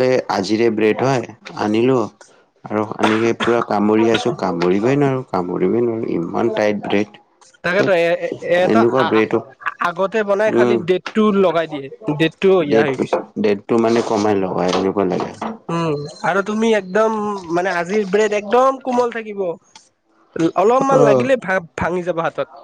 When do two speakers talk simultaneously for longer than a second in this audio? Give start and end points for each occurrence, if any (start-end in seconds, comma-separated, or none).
none